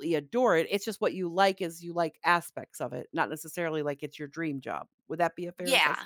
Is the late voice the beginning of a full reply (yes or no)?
yes